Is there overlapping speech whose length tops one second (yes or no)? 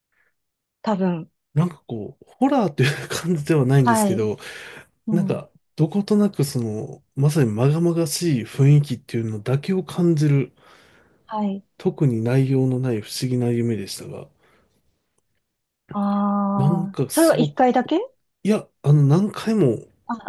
yes